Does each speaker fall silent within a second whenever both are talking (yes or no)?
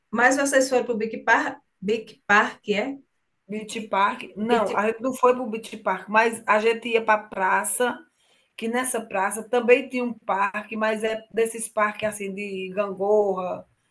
yes